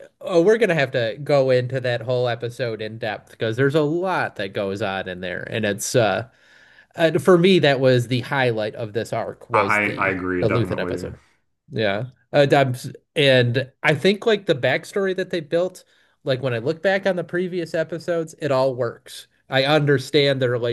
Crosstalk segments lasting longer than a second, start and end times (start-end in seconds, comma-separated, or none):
9.5-11.1